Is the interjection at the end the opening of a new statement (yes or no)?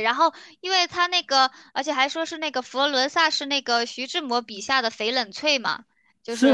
yes